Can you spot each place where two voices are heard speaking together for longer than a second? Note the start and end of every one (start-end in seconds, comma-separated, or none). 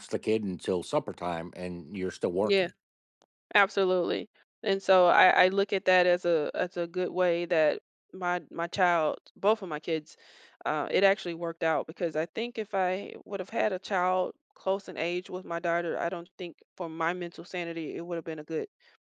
none